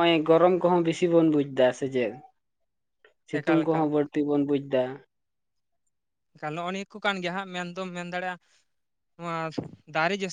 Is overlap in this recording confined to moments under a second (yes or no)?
yes